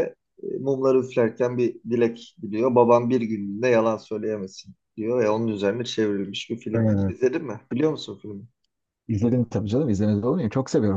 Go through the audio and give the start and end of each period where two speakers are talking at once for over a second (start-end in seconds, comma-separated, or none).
none